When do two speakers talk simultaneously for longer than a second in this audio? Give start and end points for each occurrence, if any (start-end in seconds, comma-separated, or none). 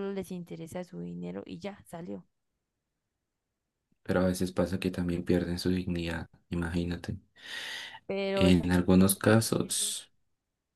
8.3-9.9